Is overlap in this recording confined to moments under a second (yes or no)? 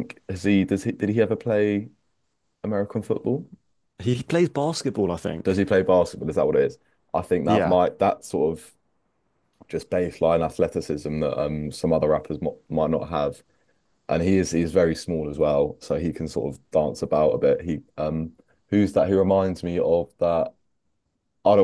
yes